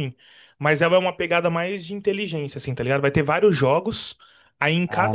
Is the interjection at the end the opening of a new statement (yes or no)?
no